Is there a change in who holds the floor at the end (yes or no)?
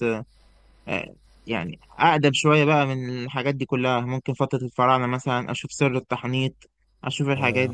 no